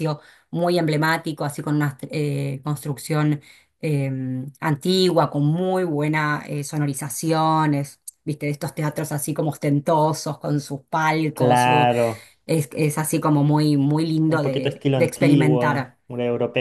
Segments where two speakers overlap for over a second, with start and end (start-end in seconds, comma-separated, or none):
14.3-16.0